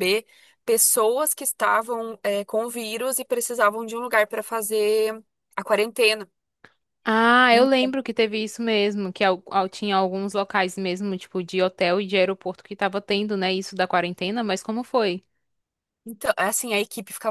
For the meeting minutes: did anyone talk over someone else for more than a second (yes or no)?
no